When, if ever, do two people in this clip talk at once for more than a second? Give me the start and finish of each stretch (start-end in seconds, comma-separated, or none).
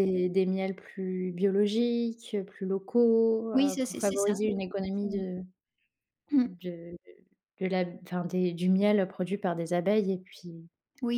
3.5-5.2